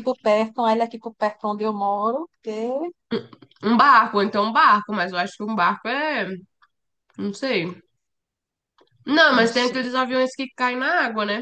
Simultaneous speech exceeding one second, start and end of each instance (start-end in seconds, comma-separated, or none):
none